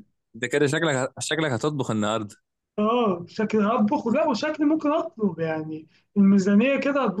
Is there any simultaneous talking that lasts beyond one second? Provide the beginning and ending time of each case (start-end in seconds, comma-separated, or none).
none